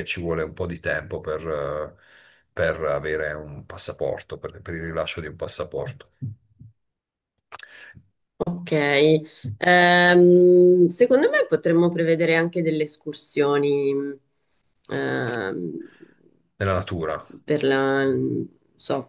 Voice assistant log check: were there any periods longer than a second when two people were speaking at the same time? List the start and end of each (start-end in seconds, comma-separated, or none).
none